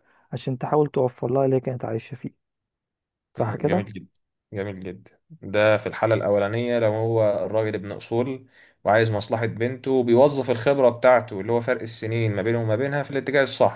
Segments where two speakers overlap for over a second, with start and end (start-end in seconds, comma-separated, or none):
none